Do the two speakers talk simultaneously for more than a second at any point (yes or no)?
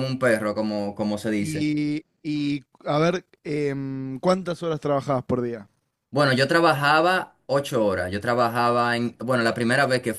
no